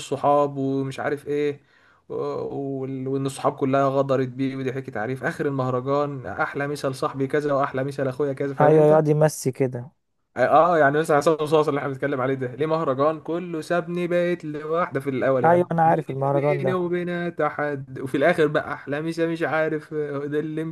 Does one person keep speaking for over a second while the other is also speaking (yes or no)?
yes